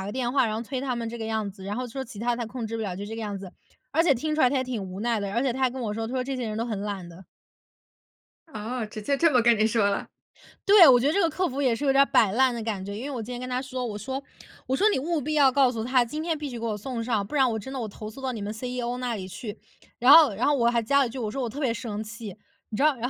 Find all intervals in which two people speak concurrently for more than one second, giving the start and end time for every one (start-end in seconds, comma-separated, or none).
none